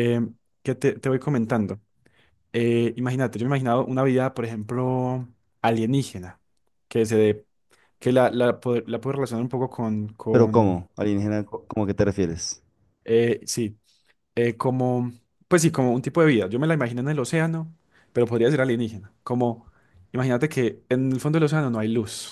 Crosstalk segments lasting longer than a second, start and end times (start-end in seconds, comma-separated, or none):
none